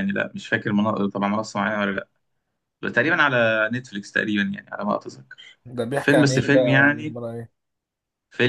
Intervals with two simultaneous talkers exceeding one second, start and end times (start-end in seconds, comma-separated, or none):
6.0-7.2